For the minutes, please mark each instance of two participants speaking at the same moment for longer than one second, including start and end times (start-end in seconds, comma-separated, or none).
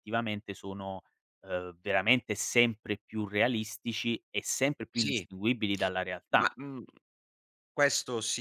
none